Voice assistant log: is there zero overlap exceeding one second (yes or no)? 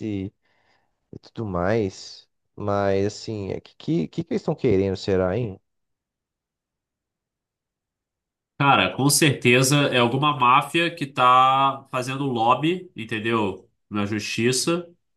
yes